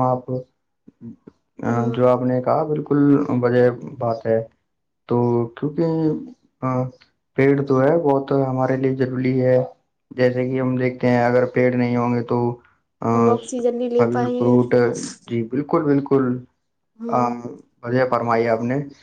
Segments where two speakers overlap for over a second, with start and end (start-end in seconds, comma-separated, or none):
13.1-14.6